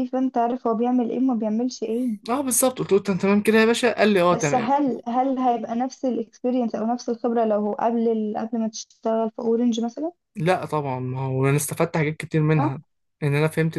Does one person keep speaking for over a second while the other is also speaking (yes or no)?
no